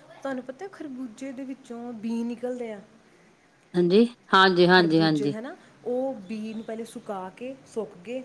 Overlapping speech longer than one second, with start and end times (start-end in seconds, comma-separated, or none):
none